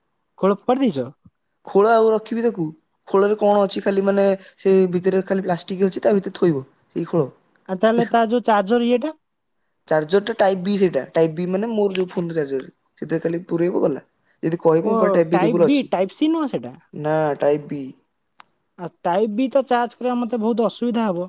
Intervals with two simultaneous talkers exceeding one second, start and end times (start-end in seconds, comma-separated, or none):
none